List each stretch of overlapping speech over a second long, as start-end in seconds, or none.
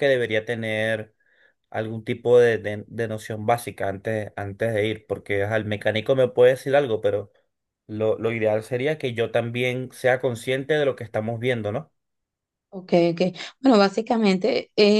none